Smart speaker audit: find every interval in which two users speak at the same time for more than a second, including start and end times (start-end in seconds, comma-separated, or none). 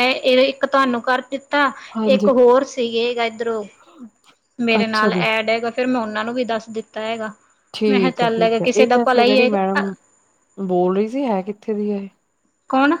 7.9-9.8